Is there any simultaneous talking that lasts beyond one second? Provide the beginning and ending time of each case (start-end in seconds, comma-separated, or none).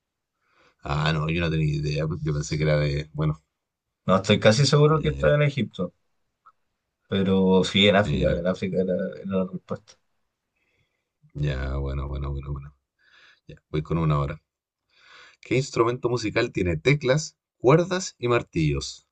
none